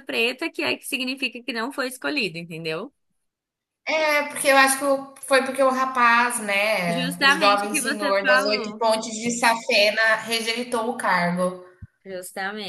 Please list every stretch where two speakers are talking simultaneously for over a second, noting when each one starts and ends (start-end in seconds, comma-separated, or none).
6.8-8.8